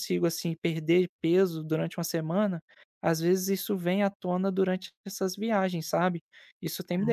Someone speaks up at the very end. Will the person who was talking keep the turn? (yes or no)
no